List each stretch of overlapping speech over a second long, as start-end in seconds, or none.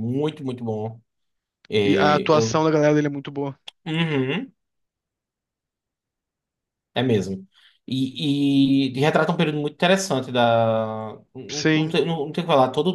none